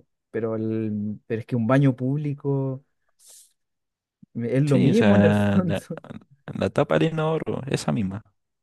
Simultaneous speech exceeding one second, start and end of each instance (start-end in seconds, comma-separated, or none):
4.7-5.9